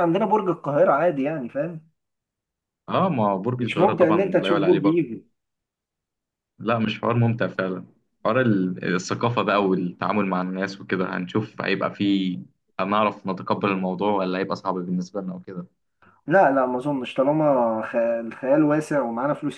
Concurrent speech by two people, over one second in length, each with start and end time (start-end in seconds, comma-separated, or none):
3.6-5.0